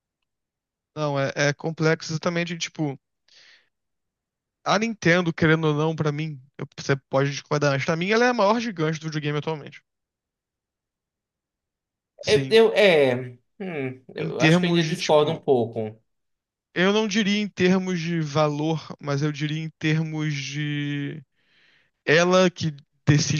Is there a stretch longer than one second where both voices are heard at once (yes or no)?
yes